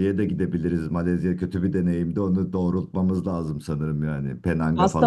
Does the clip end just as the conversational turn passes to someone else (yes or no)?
yes